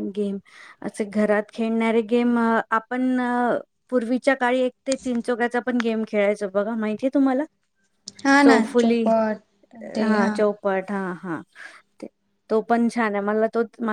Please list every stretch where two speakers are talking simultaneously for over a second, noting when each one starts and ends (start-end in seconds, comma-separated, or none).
none